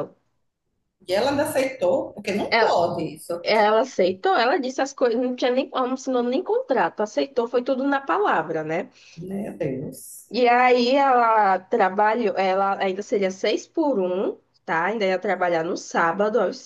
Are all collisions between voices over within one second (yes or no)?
yes